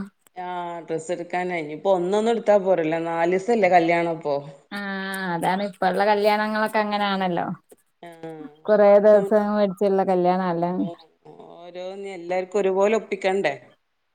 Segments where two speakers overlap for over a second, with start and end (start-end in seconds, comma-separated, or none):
none